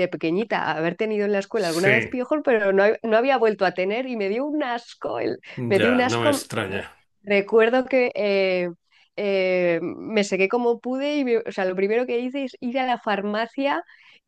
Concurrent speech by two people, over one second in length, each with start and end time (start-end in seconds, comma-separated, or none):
5.6-6.9